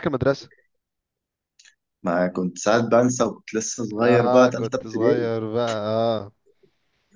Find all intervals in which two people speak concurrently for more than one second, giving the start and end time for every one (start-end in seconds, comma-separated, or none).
4.0-5.3